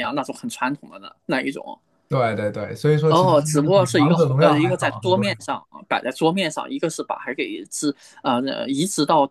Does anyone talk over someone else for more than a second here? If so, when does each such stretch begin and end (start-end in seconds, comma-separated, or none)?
3.1-5.4